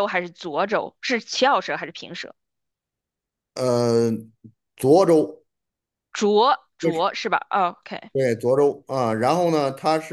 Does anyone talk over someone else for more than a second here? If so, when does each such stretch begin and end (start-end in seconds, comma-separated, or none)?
none